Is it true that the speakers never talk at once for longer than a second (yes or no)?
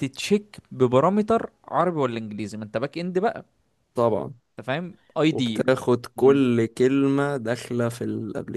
yes